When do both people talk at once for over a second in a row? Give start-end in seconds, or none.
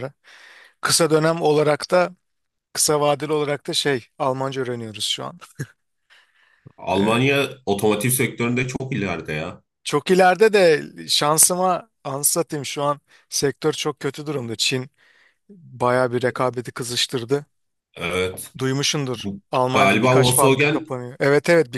19.1-20.9